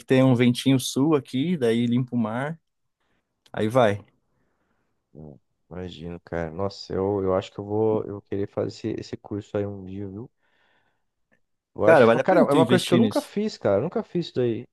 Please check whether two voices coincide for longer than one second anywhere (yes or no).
yes